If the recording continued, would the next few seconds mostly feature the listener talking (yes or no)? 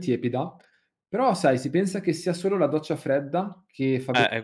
yes